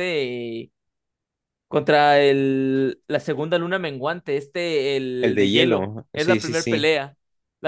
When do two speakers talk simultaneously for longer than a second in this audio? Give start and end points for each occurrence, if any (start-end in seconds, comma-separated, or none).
5.2-6.9